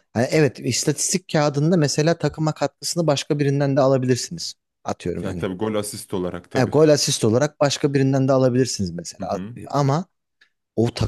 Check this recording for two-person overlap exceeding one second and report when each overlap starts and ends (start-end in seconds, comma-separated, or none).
none